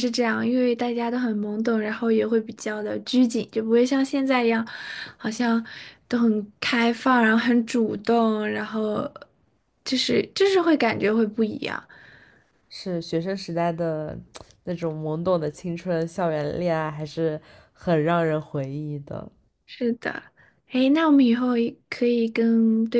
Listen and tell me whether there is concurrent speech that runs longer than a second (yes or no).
no